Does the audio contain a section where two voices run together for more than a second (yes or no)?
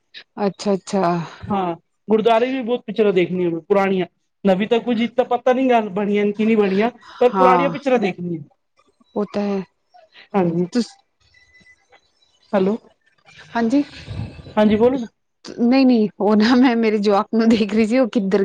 no